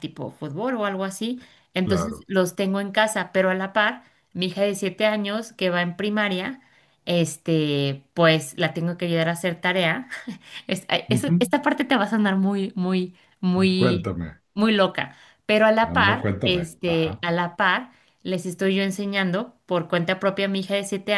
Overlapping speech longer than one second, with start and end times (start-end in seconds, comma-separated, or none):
15.8-17.2